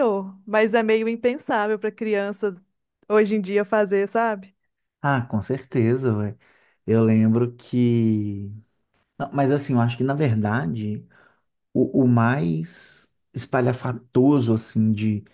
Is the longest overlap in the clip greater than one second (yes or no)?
no